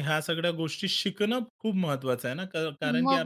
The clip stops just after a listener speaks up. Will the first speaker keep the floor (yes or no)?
no